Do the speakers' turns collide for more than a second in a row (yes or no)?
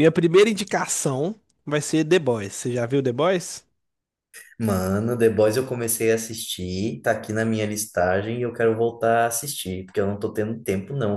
no